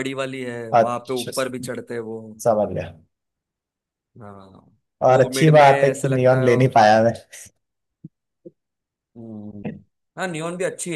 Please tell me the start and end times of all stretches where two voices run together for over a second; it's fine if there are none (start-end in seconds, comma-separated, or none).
5.1-6.5